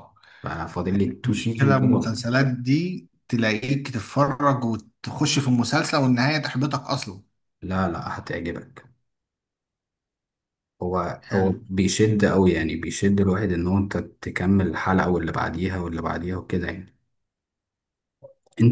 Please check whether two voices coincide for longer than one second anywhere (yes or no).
yes